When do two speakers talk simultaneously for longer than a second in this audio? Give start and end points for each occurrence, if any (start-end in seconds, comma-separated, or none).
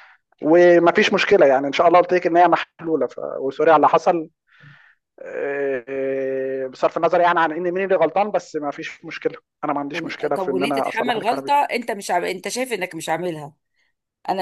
9.9-11.6